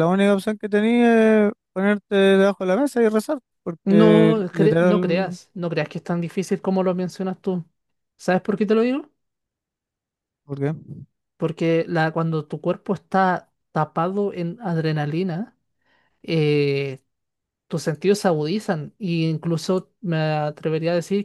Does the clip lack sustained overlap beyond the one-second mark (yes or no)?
no